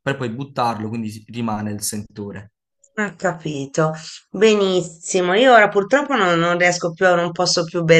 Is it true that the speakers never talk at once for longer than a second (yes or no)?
yes